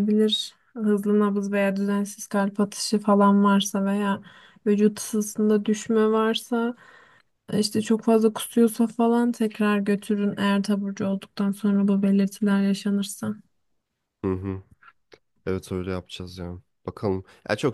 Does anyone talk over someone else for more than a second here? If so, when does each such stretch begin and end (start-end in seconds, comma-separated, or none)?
none